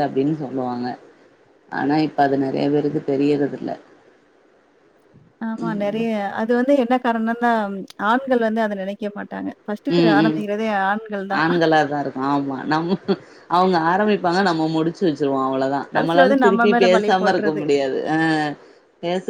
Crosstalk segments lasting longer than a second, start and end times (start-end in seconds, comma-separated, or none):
15.9-17.5